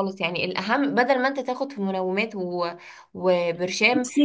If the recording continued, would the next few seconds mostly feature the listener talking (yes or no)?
no